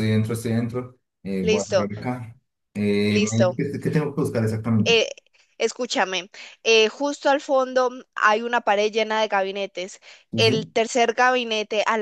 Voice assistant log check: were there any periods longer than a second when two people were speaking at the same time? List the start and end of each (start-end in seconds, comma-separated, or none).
none